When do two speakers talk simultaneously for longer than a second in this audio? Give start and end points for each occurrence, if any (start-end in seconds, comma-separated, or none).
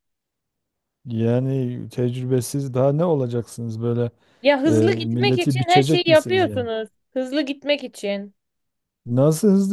4.7-6.7